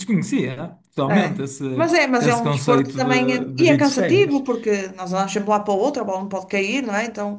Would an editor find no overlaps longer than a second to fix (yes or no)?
no